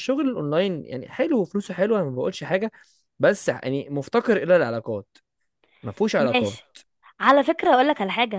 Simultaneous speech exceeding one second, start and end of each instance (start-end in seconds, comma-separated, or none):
none